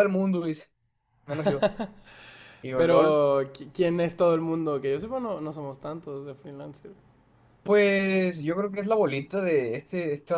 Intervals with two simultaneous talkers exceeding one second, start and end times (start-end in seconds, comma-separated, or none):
none